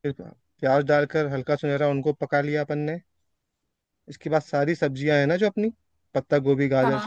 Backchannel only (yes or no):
yes